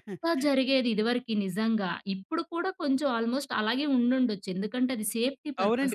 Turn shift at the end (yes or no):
yes